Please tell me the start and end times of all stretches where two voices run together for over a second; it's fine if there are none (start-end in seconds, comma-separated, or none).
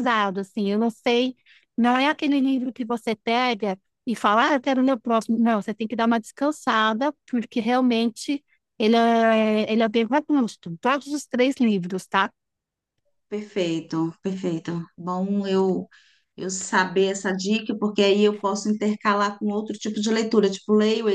none